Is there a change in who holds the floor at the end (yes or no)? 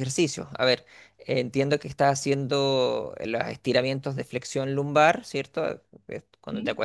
no